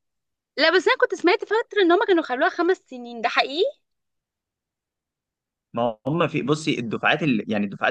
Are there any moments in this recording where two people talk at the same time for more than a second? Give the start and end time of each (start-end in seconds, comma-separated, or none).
none